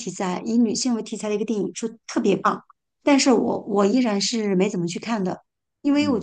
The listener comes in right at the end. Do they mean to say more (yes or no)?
no